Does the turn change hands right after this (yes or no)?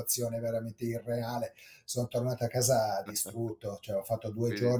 no